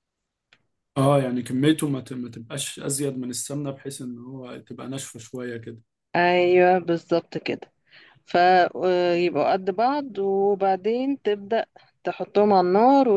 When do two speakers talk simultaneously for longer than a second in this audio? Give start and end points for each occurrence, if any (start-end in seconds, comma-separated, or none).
none